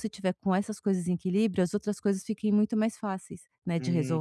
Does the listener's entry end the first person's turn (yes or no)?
yes